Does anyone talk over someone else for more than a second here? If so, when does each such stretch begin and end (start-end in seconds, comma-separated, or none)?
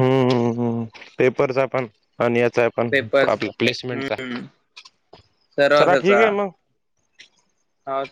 2.9-4.1